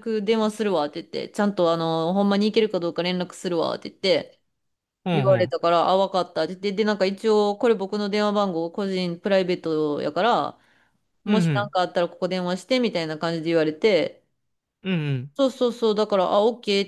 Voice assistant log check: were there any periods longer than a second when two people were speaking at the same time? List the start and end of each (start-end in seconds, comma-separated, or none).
none